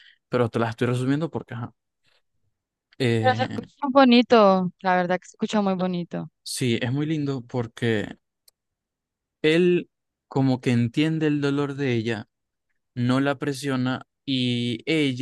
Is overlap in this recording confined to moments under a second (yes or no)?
yes